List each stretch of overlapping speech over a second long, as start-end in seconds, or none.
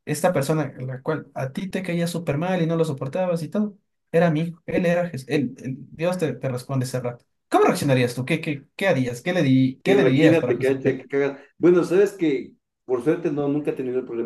9.8-11.1